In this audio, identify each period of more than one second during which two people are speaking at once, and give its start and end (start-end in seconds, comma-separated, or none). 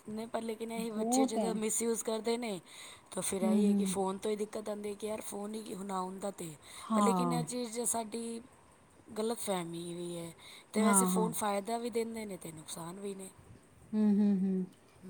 none